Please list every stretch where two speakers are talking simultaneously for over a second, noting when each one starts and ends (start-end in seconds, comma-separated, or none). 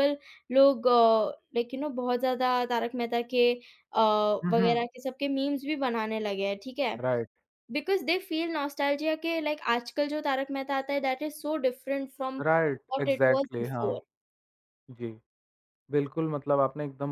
12.4-14.0